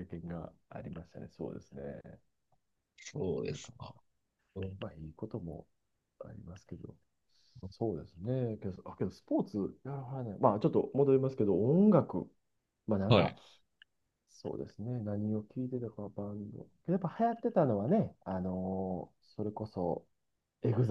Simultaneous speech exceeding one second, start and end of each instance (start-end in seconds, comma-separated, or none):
none